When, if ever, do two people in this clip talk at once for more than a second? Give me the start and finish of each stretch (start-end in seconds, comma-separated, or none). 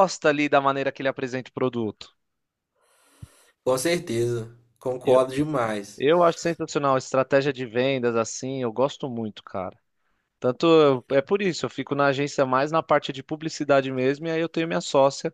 none